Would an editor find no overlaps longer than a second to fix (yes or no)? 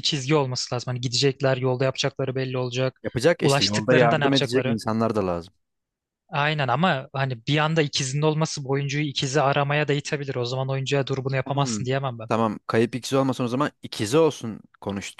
no